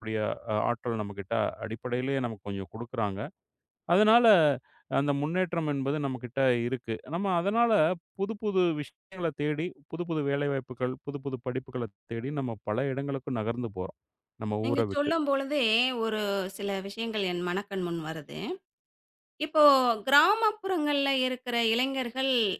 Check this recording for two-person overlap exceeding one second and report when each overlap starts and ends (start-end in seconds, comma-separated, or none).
none